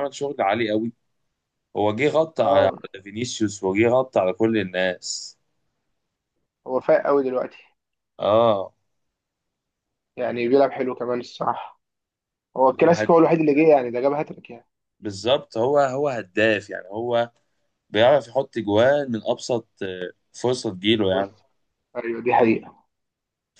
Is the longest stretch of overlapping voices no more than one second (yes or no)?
yes